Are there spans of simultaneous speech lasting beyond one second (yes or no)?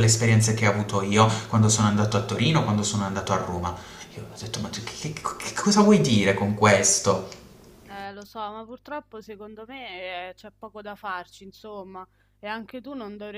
no